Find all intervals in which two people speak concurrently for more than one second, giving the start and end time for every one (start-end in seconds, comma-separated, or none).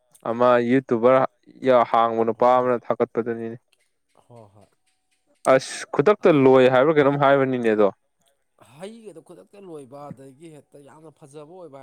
none